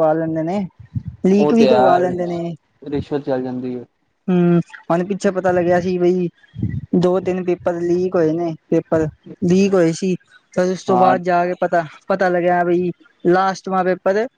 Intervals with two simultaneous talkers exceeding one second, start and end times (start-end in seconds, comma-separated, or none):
1.3-2.5